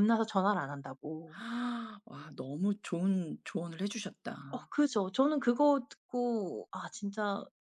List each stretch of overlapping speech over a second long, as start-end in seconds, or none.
none